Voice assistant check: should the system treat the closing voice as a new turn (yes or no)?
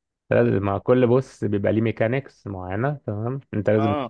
no